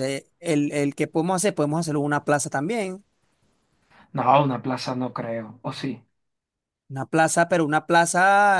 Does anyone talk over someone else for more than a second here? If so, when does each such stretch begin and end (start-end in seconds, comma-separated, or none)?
none